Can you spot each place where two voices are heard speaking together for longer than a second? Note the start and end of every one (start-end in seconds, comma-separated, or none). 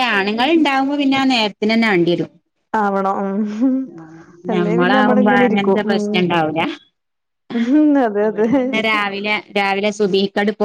4.5-6.0